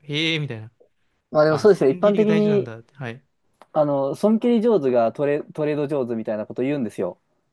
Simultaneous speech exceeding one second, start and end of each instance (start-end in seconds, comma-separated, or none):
1.5-2.7